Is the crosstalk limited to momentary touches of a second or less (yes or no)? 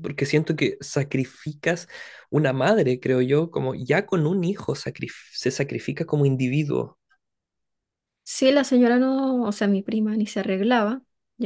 yes